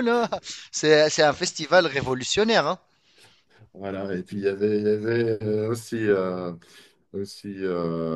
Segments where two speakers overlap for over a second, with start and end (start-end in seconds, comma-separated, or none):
none